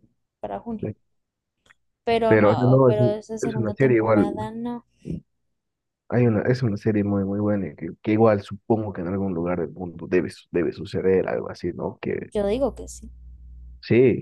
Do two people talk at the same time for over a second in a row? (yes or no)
yes